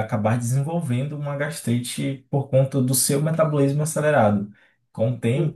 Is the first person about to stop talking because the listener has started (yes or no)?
no